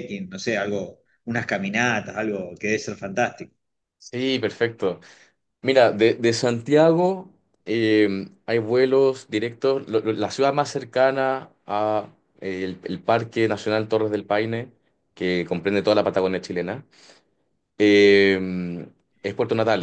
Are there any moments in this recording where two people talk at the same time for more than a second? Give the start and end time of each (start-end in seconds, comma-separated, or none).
none